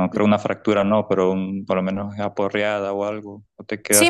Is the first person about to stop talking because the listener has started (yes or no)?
yes